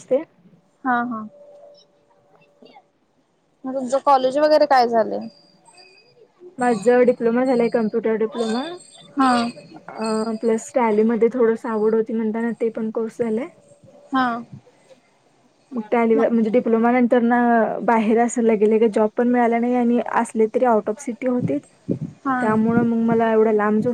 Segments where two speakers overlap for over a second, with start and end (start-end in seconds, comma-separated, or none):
none